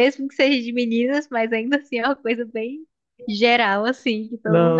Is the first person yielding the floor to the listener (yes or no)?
yes